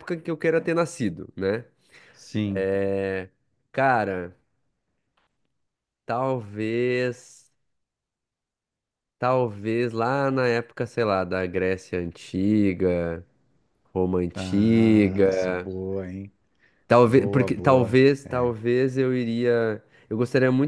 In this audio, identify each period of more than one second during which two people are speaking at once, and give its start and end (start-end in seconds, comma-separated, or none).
14.3-15.7, 17.1-18.5